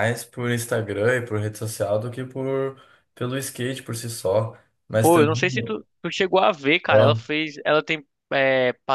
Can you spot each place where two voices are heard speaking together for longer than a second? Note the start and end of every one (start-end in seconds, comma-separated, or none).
none